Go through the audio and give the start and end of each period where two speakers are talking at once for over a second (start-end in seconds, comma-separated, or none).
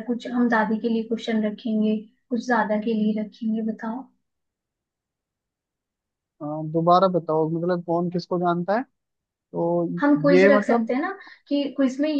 none